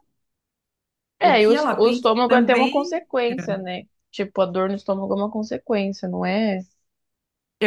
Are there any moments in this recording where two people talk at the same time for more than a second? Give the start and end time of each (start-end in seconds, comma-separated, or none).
1.2-3.0